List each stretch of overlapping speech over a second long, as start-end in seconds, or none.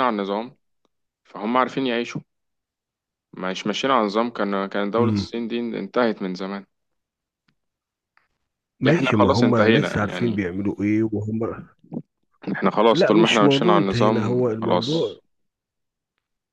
8.9-10.4, 12.9-15.2